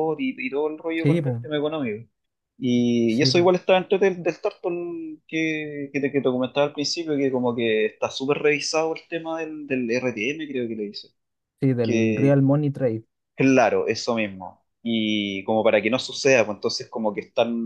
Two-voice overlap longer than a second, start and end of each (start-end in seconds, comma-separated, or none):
none